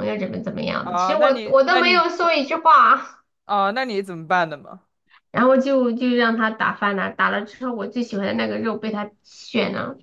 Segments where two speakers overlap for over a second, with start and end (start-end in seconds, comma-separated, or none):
0.8-2.0